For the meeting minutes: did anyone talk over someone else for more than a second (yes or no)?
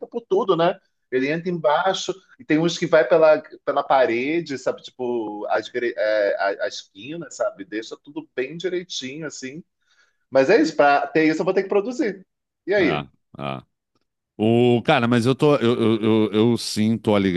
no